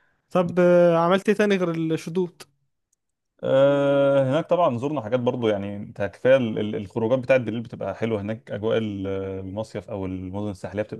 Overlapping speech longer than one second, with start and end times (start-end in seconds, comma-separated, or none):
none